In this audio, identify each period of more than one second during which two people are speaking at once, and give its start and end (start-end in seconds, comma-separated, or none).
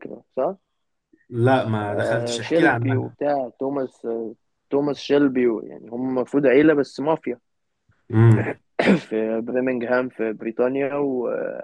1.9-3.1